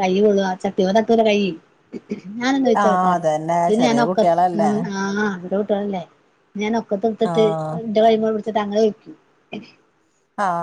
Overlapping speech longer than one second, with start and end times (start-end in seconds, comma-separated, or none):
2.8-4.7